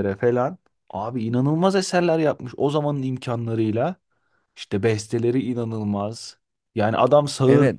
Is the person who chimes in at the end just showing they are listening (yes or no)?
yes